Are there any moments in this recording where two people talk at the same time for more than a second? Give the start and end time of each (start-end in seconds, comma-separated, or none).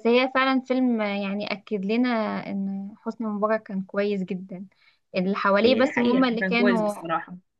5.6-6.9